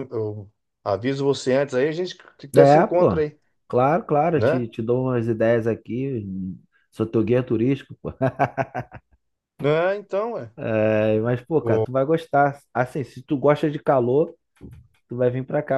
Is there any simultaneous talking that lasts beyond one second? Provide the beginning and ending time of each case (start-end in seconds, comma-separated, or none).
none